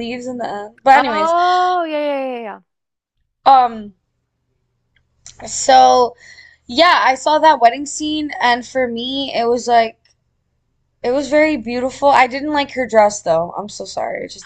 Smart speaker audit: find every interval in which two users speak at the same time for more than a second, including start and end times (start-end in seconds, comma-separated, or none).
none